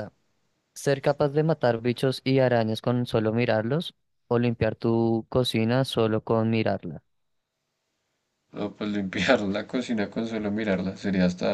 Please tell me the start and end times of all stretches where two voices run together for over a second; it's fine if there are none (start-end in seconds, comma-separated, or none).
none